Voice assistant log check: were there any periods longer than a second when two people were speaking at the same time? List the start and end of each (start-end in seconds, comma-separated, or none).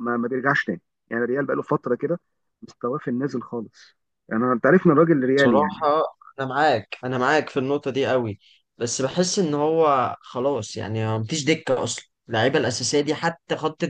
none